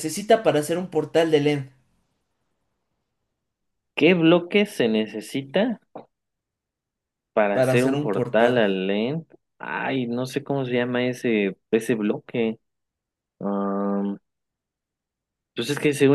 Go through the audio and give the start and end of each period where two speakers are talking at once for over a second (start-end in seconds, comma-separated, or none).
7.5-8.8